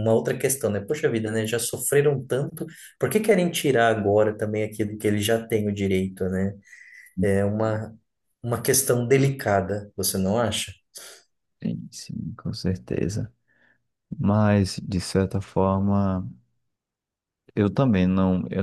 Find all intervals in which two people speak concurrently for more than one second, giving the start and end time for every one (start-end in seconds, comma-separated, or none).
none